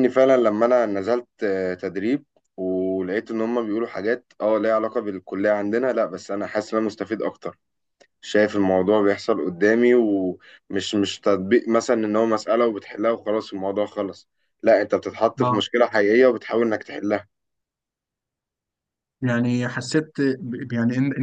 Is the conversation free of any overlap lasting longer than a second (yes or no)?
yes